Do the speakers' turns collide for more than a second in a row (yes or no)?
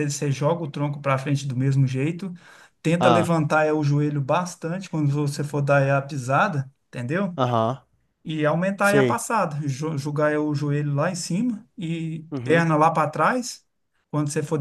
no